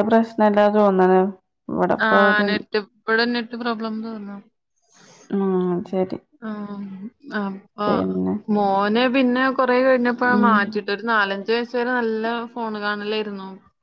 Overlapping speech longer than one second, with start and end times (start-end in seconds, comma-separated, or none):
none